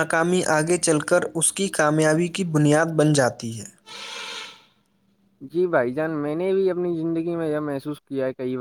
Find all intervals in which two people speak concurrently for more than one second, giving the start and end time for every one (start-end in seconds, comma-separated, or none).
none